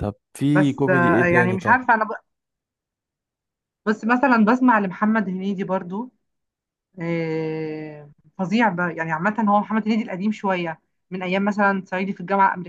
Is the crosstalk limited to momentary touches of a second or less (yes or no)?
no